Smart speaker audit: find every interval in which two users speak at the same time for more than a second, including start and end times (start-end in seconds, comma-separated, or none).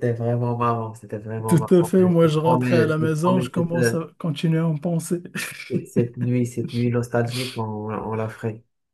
1.5-3.9